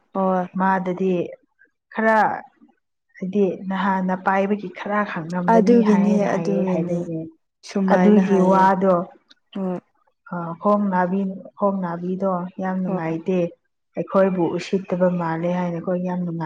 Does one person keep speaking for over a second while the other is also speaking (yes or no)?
yes